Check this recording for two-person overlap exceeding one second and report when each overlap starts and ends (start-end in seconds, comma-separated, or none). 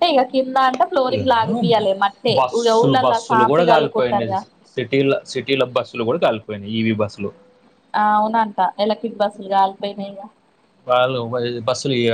2.4-4.3